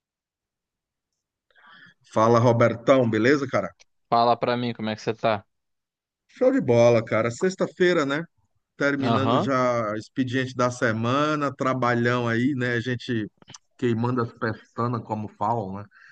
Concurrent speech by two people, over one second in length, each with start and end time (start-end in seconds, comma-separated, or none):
none